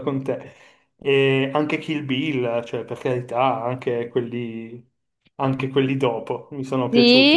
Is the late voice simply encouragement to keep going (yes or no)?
no